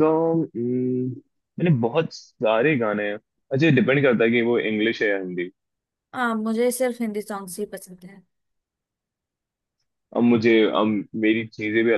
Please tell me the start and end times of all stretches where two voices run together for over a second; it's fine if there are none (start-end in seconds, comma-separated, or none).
none